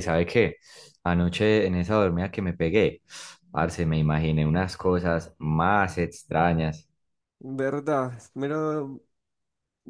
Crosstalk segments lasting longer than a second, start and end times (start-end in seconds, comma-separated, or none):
none